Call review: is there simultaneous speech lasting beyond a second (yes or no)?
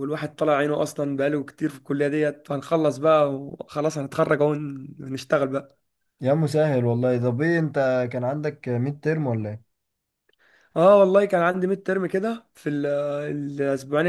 no